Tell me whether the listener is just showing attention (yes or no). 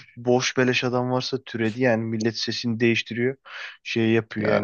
yes